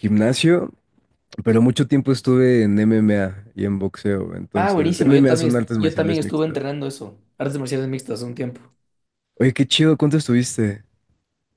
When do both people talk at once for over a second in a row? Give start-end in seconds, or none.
4.5-6.6